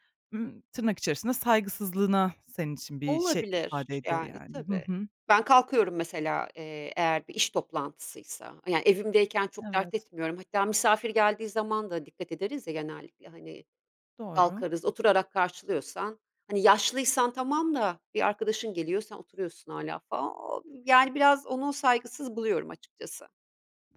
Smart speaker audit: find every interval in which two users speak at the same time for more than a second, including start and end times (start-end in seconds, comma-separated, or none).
3.0-4.8